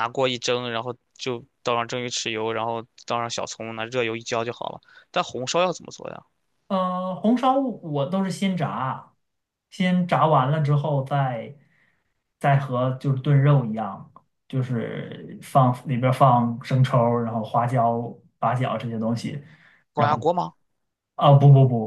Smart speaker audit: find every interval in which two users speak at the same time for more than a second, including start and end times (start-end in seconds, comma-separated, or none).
none